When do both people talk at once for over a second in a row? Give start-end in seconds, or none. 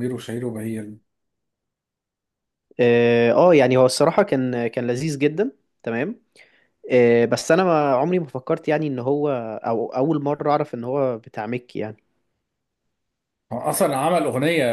none